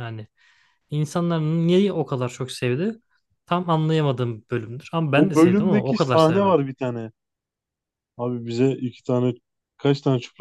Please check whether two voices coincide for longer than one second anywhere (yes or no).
yes